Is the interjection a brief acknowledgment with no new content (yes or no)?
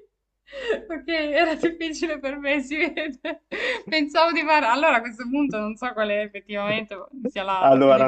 no